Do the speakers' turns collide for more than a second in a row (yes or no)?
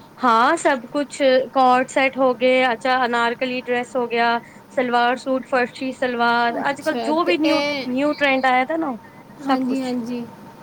yes